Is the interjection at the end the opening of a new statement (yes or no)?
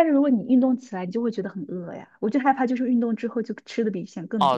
yes